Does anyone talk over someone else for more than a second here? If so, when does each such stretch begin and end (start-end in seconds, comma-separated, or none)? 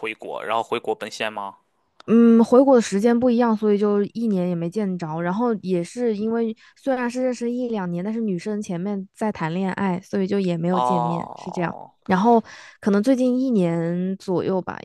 10.7-11.9